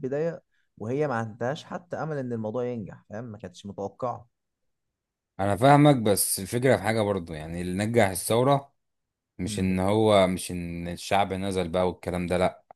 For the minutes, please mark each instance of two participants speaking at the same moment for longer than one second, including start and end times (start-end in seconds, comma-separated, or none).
none